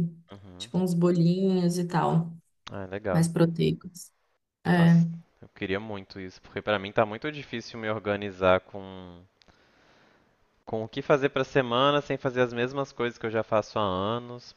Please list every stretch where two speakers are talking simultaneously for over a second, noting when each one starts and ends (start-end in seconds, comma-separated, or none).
none